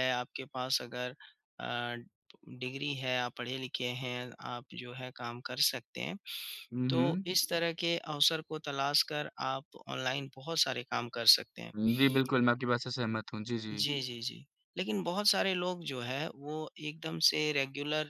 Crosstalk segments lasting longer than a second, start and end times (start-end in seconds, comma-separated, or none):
none